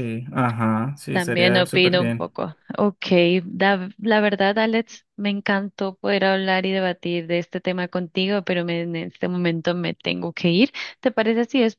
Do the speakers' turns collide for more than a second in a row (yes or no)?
yes